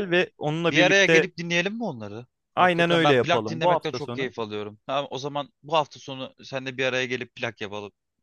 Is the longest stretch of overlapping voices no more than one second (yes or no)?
no